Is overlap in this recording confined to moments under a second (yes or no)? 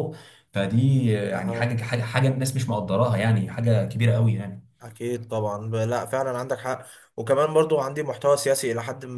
yes